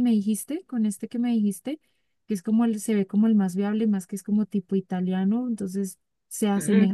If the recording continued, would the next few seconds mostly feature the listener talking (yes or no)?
no